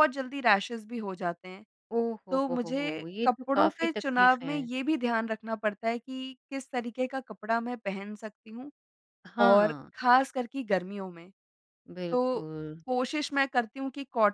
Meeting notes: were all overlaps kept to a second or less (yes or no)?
no